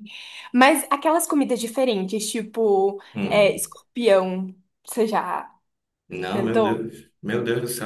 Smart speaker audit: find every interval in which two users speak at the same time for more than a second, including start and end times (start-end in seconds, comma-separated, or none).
none